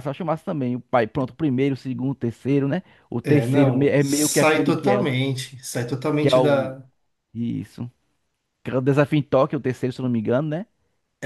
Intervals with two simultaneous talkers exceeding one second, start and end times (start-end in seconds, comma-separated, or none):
3.3-5.1